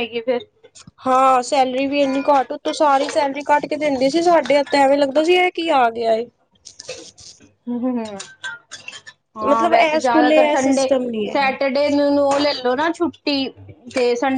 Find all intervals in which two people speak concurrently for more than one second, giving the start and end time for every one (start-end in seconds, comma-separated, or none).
9.5-11.4